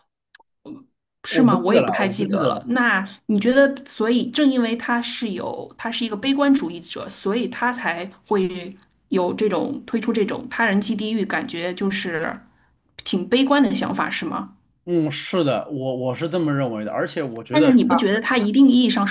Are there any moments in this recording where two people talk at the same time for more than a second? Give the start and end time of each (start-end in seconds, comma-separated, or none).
1.3-2.6